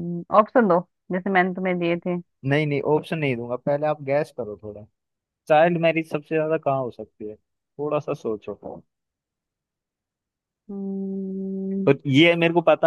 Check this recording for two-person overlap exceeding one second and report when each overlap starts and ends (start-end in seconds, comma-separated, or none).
none